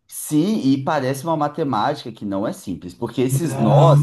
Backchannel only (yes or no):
yes